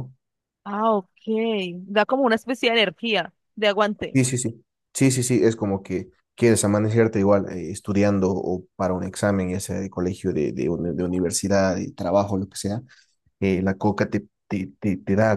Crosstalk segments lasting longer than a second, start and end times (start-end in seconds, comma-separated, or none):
none